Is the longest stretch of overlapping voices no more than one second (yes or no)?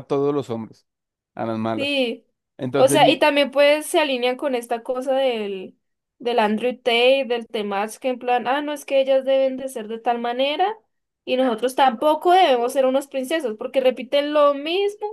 yes